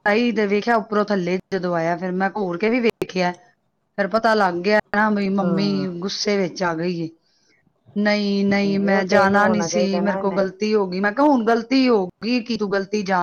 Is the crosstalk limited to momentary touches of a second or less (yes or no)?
no